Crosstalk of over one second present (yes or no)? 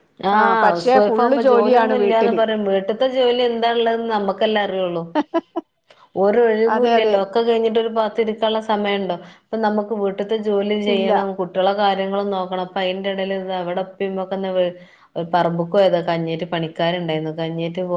yes